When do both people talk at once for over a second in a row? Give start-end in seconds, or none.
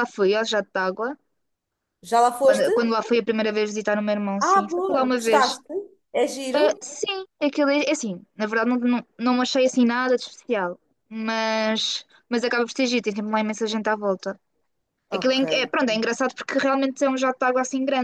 4.4-5.6